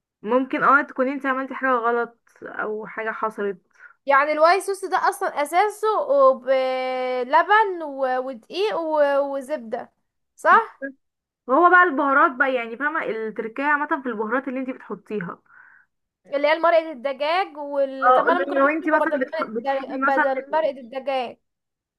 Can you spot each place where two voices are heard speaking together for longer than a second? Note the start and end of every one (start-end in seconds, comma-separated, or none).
18.1-20.3